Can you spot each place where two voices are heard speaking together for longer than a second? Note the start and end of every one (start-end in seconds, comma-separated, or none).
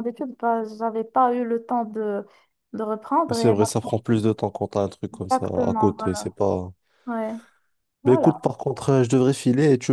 5.1-6.3